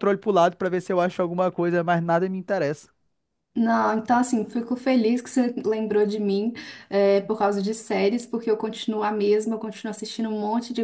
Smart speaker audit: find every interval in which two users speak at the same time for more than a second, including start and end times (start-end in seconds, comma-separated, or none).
none